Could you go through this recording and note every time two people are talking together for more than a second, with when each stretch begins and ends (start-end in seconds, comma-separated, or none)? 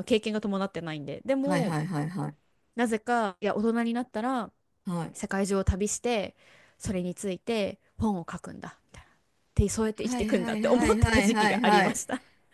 10.0-12.0